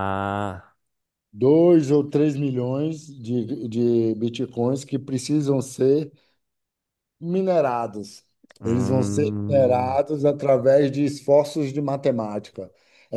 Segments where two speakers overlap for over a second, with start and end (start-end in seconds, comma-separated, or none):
8.6-10.0